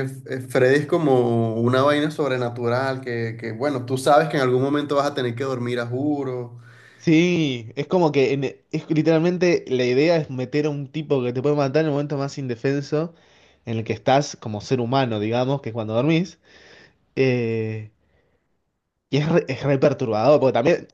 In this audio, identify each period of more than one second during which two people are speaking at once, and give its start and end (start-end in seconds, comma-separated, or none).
none